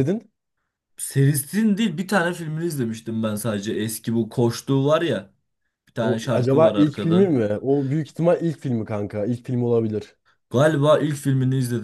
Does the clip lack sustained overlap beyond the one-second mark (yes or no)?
no